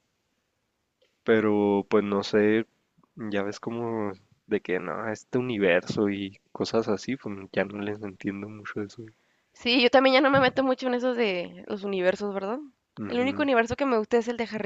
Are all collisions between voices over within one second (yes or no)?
yes